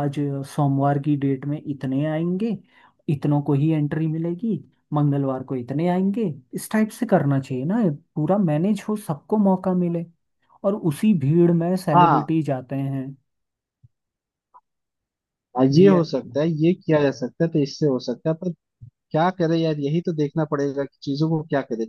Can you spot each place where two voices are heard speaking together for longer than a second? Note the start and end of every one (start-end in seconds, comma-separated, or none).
none